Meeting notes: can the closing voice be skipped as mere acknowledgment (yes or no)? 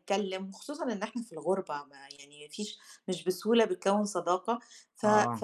yes